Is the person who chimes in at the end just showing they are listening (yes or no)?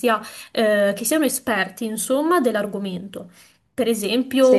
yes